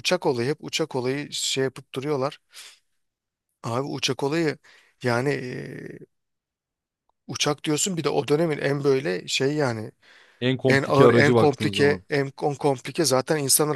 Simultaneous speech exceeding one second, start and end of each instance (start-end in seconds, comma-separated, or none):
10.7-12.0